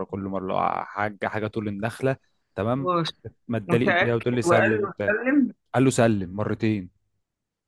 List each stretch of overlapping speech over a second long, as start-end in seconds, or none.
3.7-5.1